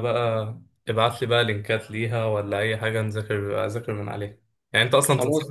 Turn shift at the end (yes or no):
no